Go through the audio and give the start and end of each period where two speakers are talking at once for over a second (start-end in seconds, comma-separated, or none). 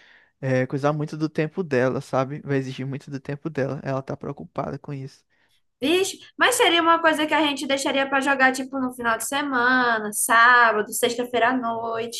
none